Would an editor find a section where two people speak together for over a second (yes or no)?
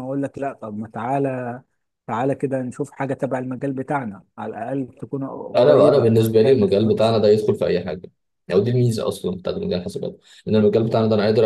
yes